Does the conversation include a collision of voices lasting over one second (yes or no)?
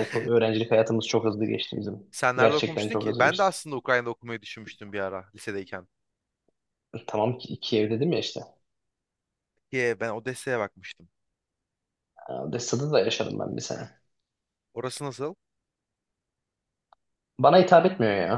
yes